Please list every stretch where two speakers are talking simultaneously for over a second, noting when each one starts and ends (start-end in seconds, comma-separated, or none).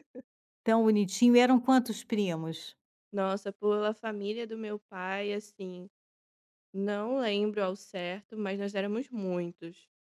none